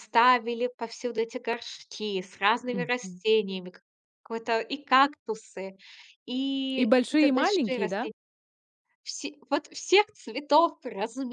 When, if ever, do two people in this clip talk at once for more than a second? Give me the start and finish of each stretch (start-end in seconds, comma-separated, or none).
6.8-8.1